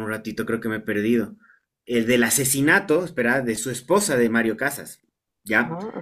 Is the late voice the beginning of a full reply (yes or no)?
no